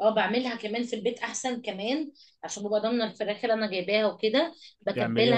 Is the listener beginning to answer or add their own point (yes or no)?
no